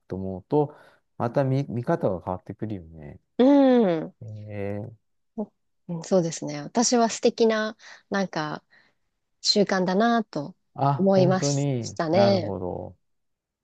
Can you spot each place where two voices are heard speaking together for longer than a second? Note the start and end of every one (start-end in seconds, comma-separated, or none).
11.0-12.6